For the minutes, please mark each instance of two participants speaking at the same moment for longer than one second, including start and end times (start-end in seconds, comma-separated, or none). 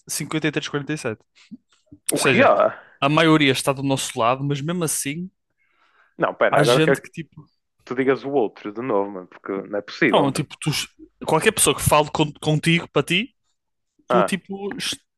none